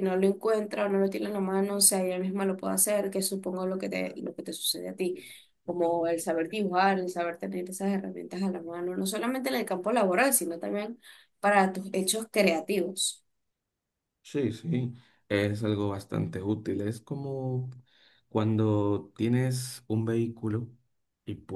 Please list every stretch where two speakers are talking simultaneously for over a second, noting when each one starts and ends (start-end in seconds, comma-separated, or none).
none